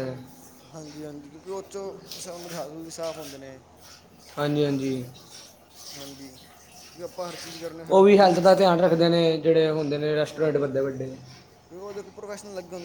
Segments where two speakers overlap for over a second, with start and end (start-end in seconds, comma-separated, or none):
none